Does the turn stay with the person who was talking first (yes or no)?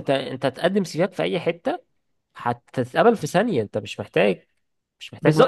no